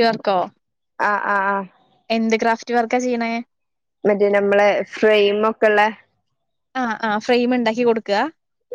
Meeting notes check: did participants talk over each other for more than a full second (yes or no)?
no